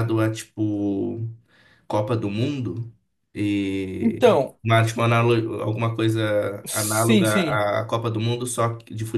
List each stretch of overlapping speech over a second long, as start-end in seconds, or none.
none